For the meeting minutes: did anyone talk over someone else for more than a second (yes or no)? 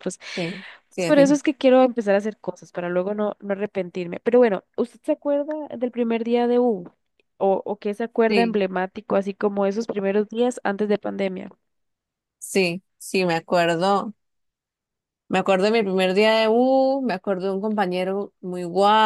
no